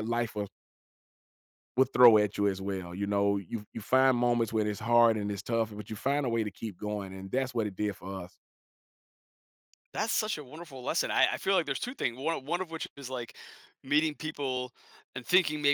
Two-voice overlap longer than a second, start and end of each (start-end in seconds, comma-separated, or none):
none